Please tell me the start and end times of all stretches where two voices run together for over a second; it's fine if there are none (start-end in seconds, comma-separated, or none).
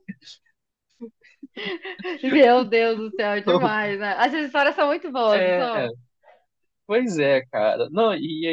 none